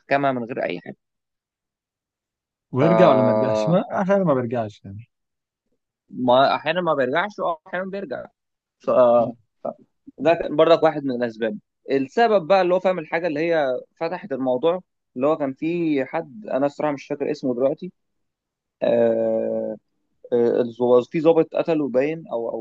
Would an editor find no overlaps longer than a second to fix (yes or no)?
yes